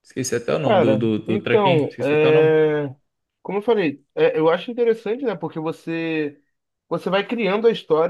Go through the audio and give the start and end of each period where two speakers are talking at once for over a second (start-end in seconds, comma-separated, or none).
0.7-2.5